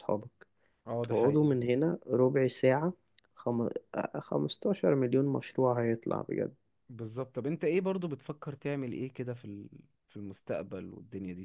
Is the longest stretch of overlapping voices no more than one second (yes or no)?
yes